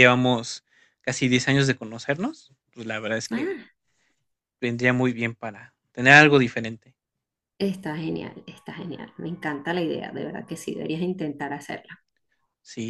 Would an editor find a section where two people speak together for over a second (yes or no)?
no